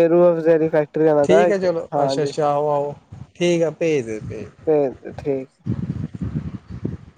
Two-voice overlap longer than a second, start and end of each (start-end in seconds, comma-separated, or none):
none